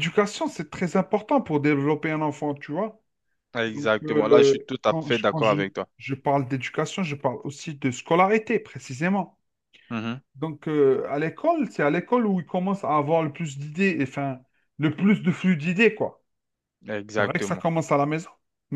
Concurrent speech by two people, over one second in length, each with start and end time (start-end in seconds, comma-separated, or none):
3.7-5.6